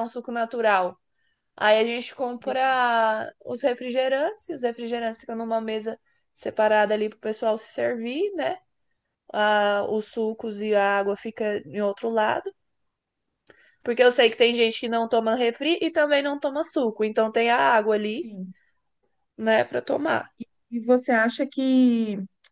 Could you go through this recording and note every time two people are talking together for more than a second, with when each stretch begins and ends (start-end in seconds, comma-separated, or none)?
none